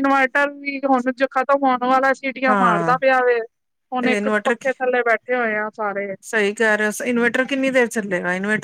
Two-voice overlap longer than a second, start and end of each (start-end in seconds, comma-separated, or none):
none